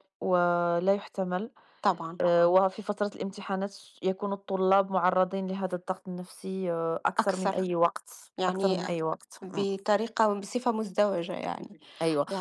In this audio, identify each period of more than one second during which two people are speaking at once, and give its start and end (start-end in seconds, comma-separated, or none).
none